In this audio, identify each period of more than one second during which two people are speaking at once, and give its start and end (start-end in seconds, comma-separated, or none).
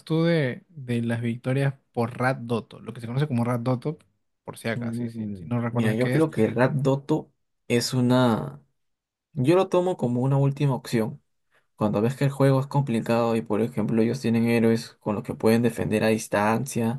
4.7-6.3